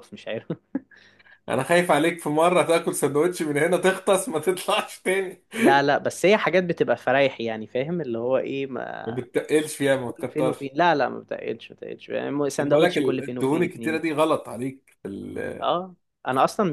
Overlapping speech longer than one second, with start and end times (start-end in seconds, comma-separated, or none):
12.6-14.0